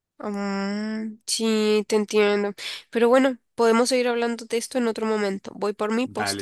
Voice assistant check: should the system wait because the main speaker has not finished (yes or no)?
no